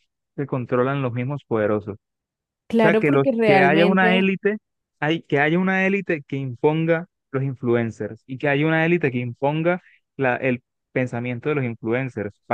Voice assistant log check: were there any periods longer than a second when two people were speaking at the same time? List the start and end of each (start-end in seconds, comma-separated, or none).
2.8-4.3